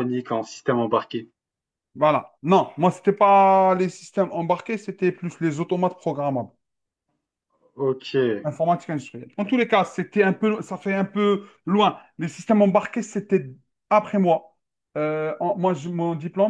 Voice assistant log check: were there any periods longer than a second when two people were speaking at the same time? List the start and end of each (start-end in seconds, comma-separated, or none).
none